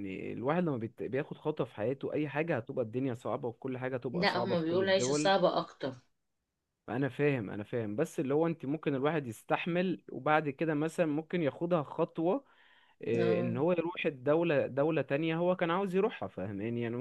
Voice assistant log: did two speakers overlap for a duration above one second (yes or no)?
yes